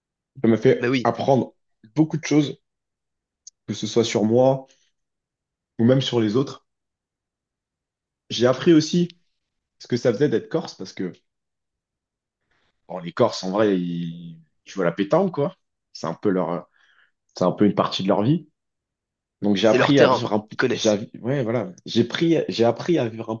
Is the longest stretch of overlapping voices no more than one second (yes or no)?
no